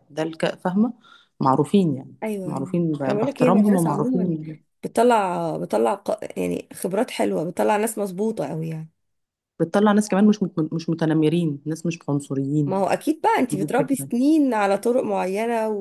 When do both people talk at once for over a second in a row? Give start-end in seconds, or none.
2.2-4.3